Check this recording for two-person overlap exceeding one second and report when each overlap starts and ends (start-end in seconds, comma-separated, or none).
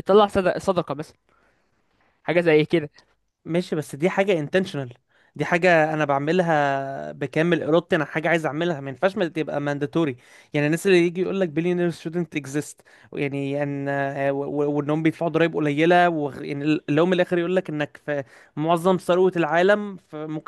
none